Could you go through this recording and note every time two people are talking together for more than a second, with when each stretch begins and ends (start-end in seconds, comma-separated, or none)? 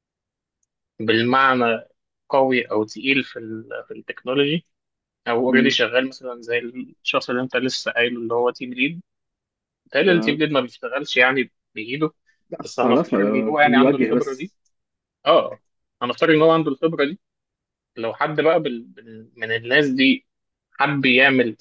12.6-14.5